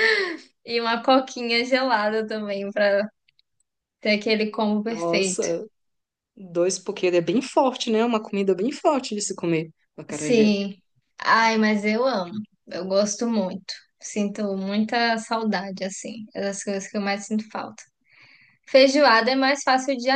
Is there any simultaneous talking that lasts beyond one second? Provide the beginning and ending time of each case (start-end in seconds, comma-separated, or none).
none